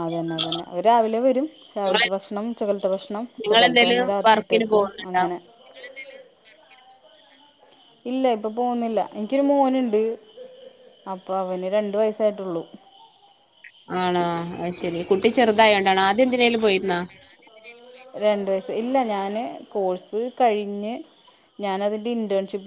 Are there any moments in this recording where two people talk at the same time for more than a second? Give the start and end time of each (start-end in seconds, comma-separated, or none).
3.4-5.2